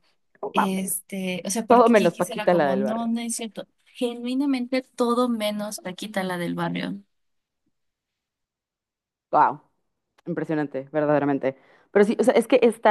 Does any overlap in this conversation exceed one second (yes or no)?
yes